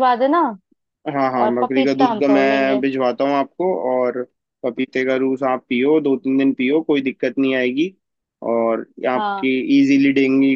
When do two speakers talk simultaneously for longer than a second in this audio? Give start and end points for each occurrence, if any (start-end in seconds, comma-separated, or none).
1.4-2.8